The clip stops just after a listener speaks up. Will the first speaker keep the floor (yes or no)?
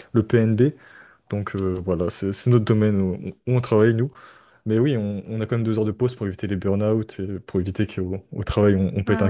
no